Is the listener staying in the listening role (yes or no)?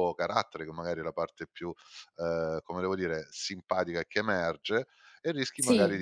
yes